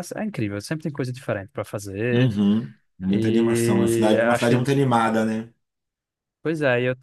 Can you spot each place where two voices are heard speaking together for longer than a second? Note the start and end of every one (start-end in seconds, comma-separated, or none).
3.1-4.6